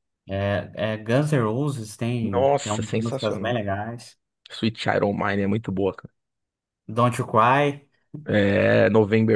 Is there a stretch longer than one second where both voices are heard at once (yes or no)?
yes